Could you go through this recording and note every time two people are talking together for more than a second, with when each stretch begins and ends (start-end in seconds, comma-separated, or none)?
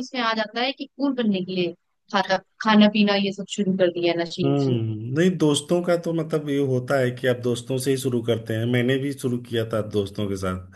none